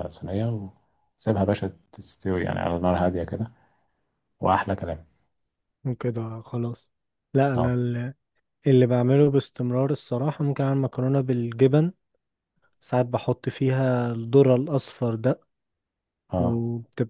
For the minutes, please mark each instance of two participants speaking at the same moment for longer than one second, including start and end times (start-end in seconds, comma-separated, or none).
none